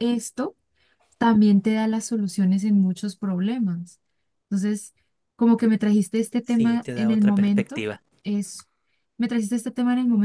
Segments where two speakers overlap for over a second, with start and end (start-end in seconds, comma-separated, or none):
6.4-7.8